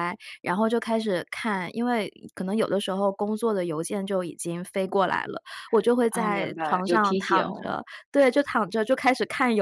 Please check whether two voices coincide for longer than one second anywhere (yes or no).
yes